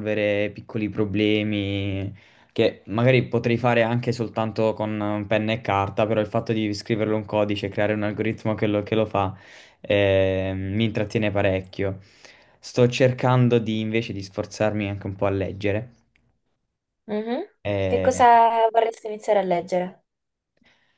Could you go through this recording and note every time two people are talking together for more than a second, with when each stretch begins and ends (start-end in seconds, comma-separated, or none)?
none